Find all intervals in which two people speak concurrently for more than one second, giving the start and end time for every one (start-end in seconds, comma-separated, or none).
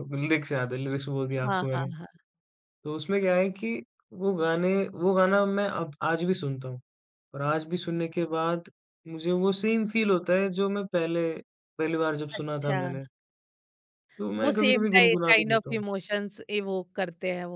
14.4-15.8